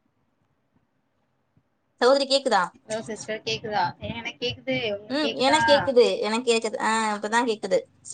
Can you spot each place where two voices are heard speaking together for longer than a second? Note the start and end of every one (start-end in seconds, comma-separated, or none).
none